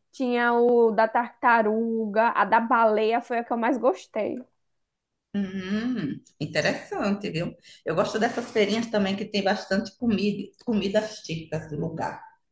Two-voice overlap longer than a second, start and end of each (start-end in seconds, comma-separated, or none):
none